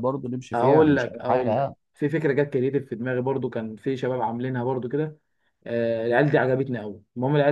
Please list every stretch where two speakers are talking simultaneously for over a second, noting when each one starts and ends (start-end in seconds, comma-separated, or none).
0.5-1.8